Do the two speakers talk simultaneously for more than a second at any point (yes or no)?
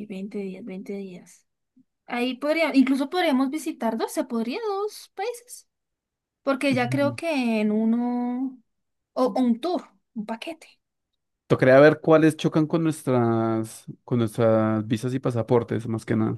no